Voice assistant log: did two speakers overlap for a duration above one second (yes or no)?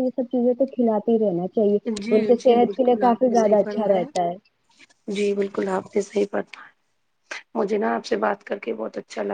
yes